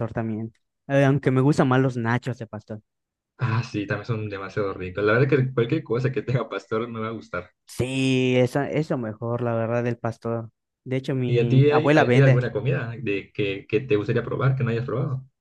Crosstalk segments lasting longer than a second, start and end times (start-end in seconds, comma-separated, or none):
11.3-12.5